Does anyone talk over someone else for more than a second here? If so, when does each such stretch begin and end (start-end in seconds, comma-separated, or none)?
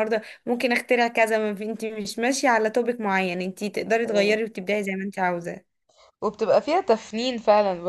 none